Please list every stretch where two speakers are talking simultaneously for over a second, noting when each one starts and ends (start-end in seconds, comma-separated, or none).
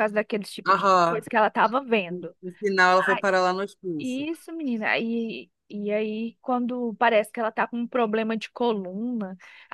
none